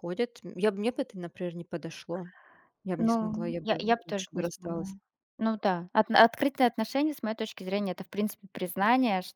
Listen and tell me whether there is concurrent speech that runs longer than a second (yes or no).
yes